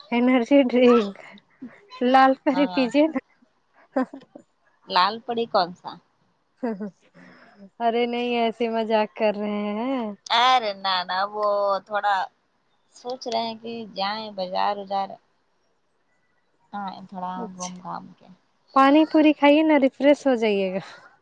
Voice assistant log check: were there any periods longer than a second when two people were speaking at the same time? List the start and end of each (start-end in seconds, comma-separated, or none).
none